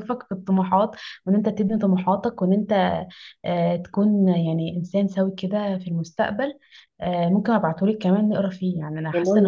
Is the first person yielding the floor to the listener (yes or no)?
yes